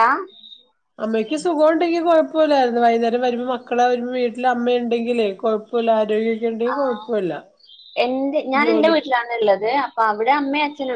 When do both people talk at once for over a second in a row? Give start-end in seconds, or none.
none